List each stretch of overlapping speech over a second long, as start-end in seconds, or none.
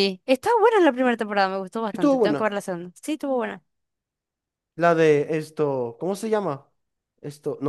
none